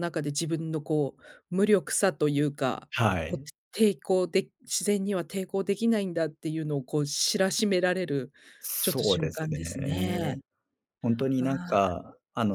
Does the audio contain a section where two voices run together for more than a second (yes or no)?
yes